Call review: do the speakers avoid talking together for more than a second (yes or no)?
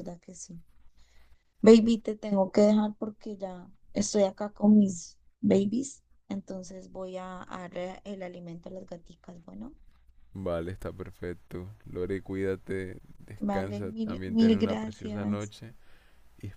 no